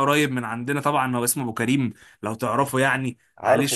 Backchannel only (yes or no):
yes